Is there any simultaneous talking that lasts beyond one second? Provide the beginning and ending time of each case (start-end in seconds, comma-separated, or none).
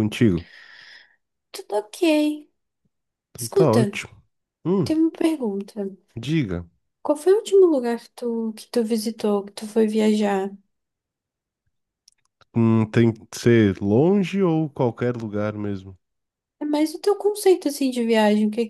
none